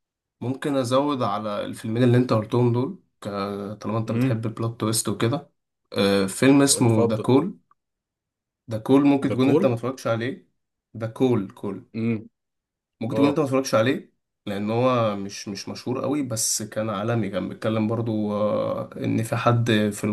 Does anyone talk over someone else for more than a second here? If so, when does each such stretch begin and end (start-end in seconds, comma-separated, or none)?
none